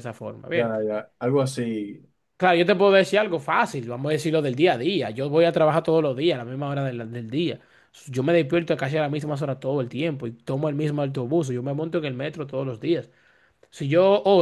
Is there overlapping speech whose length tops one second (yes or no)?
no